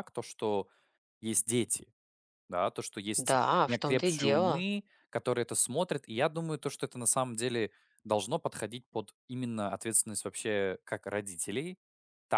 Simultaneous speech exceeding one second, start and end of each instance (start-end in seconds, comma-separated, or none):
3.2-4.7